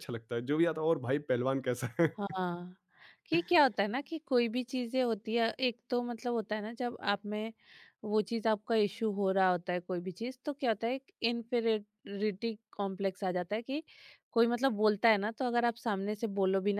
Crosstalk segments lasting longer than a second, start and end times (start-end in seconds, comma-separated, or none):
none